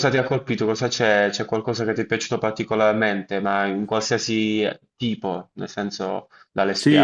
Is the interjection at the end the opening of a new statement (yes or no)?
yes